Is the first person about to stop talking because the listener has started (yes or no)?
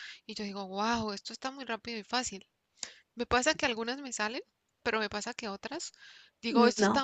no